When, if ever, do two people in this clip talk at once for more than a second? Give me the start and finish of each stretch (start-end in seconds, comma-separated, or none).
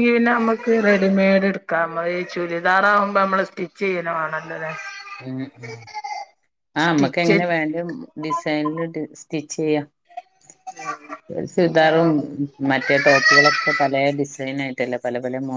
none